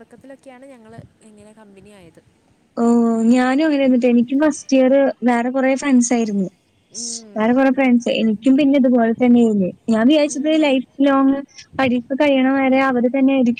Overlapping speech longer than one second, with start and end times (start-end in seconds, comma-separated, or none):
none